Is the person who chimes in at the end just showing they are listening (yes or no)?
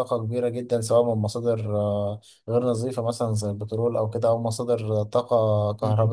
yes